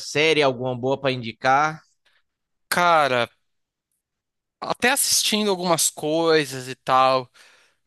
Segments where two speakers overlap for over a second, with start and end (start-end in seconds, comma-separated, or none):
none